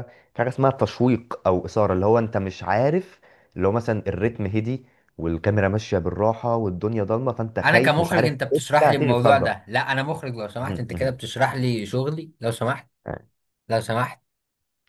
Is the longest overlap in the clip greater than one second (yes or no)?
yes